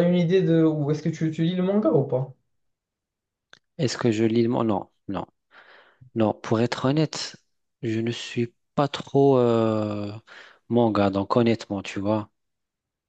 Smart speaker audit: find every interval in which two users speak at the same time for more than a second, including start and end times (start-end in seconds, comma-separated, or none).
none